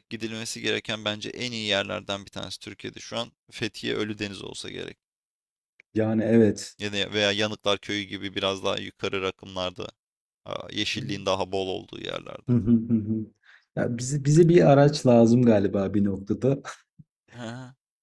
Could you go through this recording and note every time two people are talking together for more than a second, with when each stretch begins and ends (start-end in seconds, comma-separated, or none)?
none